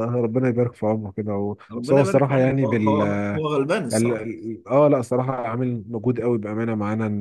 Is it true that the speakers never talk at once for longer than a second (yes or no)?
no